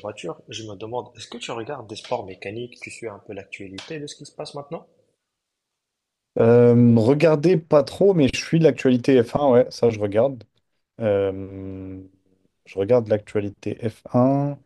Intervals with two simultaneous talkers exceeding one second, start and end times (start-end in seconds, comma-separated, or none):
none